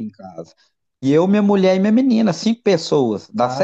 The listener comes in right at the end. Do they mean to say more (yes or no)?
yes